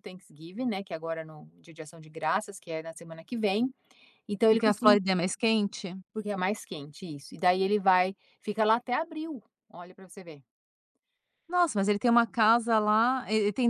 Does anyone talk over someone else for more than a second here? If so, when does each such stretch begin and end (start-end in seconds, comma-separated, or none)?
none